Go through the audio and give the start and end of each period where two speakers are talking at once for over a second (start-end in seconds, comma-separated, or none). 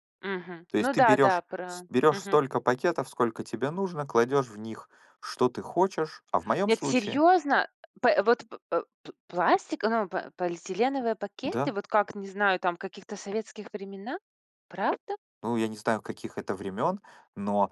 0.7-2.4